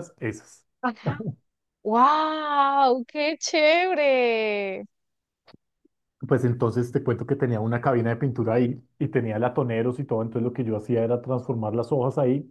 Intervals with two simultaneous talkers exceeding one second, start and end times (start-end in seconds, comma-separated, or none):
none